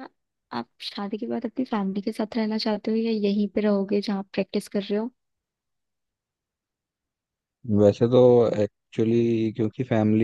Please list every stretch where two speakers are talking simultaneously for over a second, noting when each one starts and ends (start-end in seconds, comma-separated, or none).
none